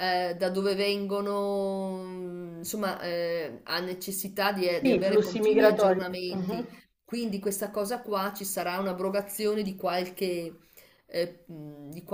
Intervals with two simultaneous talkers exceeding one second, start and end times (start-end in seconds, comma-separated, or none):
4.8-6.7